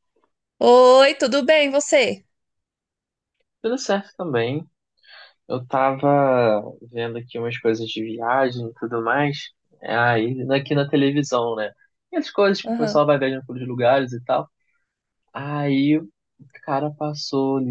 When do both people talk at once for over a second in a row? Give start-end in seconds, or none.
none